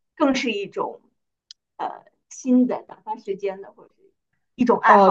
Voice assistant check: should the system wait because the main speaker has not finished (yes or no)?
no